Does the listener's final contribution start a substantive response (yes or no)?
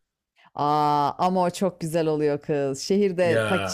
no